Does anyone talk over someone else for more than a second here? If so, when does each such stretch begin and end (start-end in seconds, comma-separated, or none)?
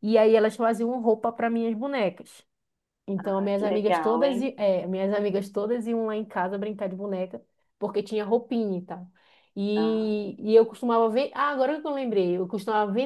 3.2-4.5